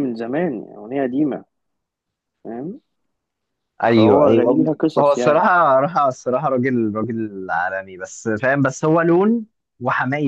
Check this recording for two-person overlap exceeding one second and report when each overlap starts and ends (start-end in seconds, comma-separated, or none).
4.0-5.5